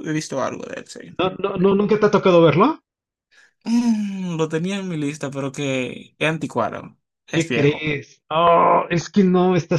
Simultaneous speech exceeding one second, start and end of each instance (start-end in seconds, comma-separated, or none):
none